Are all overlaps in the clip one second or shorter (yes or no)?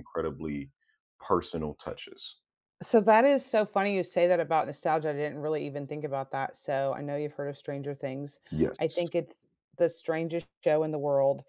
yes